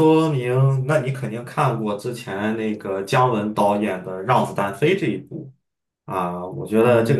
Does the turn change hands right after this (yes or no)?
yes